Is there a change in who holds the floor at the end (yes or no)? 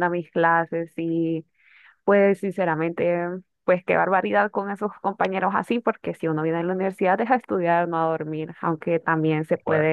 no